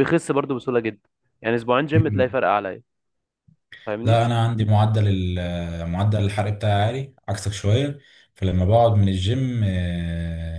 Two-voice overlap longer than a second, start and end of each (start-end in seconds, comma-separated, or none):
none